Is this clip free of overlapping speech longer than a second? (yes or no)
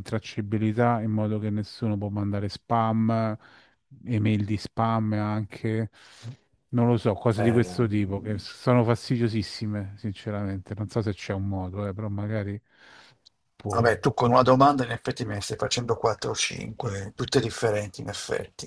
yes